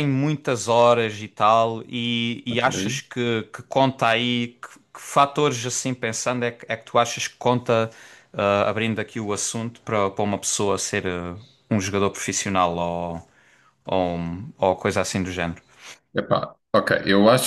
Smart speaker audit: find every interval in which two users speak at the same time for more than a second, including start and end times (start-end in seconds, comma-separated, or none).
none